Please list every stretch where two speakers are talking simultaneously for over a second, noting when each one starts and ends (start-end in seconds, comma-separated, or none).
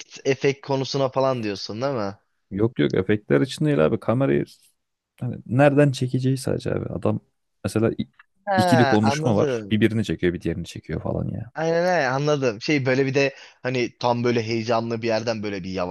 8.6-9.8